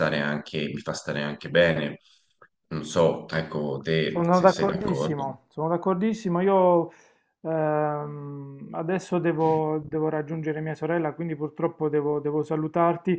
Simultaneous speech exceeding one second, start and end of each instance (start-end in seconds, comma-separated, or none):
4.1-5.4